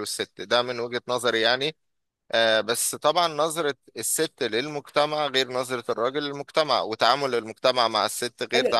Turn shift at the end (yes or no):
yes